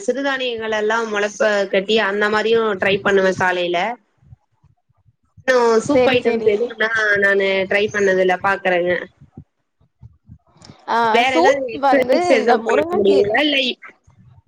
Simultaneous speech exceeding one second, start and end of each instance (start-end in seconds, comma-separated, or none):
11.3-13.3